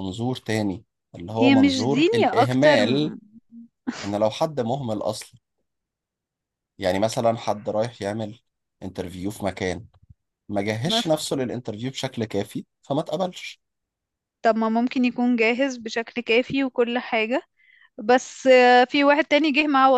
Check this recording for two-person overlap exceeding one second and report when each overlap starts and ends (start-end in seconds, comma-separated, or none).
1.4-3.1